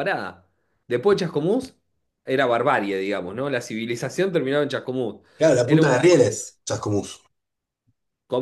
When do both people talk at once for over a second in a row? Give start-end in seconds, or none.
none